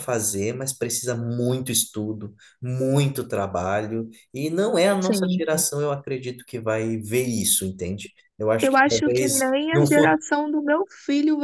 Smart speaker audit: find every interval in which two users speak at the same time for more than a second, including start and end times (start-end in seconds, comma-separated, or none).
8.6-10.2